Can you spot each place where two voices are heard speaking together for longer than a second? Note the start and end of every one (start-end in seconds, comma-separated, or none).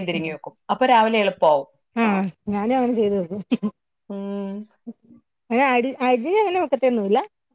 none